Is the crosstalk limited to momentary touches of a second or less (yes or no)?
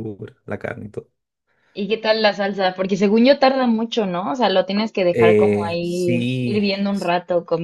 no